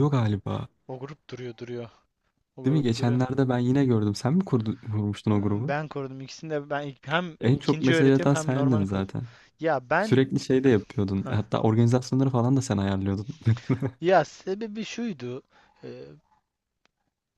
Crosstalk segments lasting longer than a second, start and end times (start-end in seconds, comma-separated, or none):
7.4-9.1